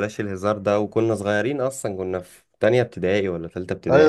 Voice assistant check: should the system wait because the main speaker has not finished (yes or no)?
no